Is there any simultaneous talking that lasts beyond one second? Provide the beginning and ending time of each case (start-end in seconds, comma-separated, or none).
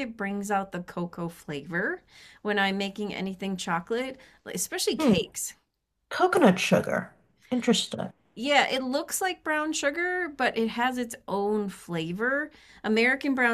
none